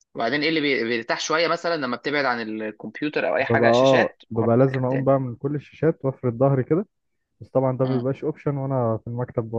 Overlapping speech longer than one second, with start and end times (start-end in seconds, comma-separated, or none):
3.4-5.1